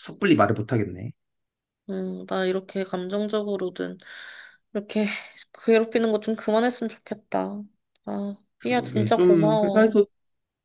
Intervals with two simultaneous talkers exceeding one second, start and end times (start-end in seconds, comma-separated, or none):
8.7-10.0